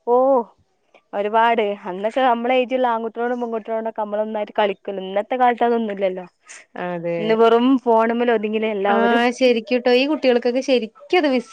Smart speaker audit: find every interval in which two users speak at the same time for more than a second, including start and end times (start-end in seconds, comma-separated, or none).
none